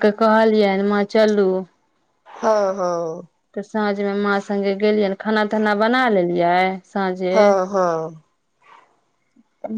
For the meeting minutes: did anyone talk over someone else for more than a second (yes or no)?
no